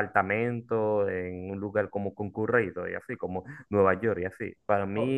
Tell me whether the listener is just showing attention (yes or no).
yes